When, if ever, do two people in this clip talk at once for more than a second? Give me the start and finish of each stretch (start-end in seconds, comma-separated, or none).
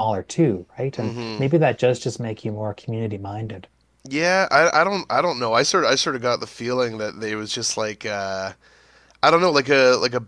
none